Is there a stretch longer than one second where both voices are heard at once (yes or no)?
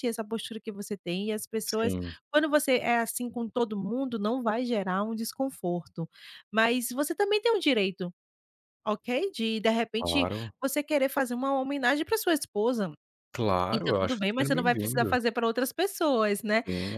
yes